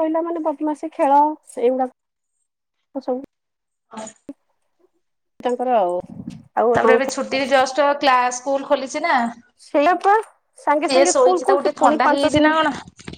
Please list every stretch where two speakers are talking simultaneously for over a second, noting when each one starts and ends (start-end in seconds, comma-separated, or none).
10.9-12.5